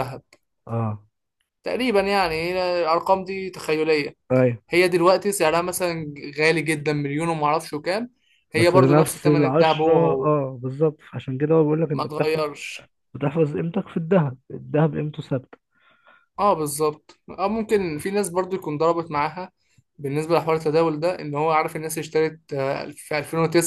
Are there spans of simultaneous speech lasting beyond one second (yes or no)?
yes